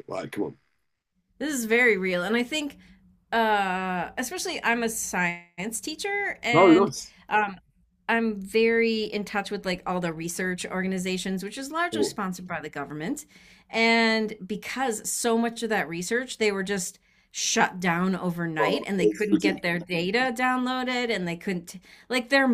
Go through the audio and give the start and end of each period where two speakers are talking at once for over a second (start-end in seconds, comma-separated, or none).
18.6-19.8